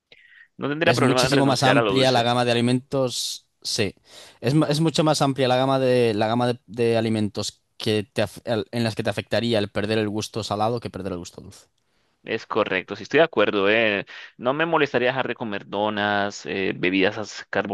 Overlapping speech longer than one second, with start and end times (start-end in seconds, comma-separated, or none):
0.8-2.3